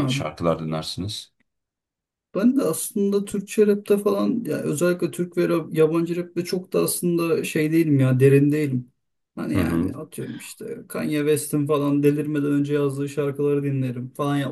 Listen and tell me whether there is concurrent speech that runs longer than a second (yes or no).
no